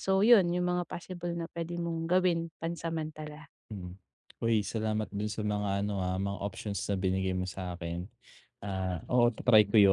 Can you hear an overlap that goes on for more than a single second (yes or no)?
no